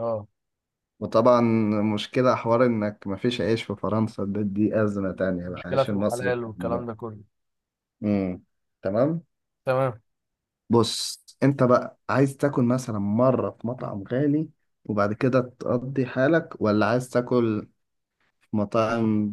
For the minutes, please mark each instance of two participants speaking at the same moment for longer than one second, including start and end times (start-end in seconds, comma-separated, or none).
5.5-6.8